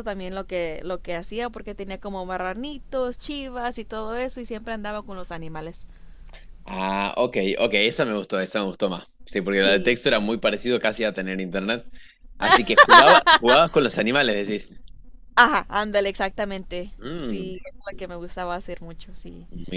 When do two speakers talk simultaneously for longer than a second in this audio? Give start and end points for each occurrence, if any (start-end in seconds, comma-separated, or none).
none